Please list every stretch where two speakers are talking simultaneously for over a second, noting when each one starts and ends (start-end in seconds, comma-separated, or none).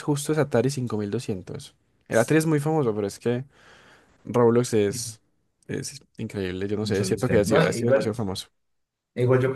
6.8-8.2